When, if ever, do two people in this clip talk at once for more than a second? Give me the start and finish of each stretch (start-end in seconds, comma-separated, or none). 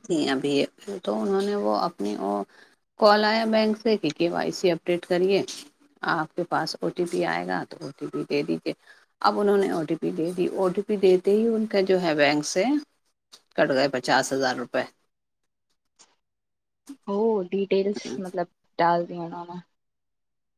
none